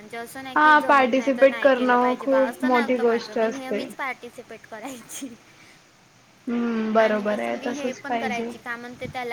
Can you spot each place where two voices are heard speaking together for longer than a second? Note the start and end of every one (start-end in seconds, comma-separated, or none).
0.6-3.8, 7.0-8.5